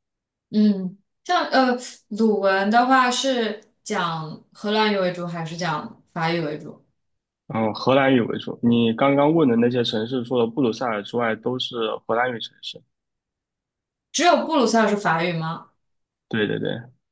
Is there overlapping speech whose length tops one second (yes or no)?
no